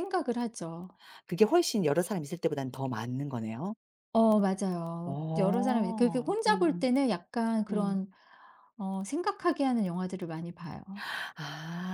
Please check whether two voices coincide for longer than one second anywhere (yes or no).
yes